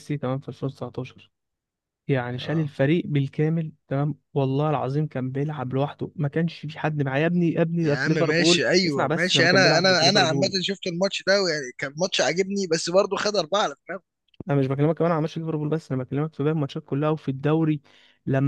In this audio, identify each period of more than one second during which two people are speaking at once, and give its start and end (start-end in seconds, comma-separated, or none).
7.8-10.5